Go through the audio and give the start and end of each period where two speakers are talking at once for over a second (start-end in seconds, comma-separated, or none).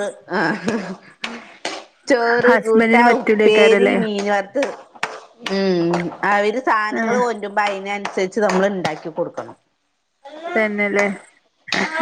2.5-4.0